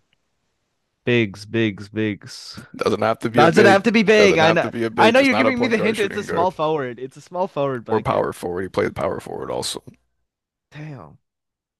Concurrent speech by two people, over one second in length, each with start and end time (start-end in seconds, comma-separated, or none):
3.4-6.6